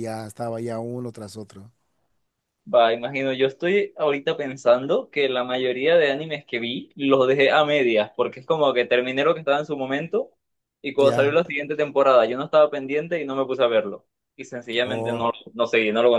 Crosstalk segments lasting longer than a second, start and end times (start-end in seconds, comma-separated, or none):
none